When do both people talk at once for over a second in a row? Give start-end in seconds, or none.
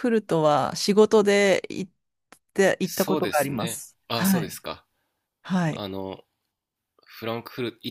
2.8-4.6